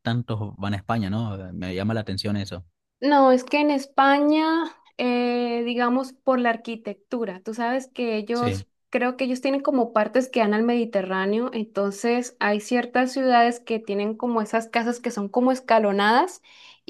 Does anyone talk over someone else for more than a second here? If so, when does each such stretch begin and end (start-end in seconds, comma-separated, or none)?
none